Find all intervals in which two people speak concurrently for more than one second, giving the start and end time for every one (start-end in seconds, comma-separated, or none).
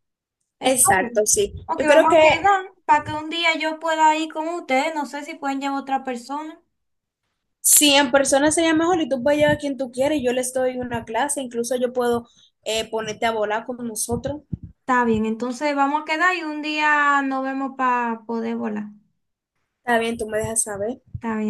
0.6-2.5